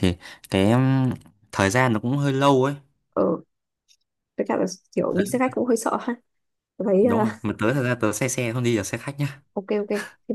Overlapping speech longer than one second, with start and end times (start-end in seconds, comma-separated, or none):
none